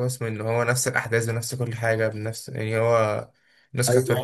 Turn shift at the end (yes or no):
yes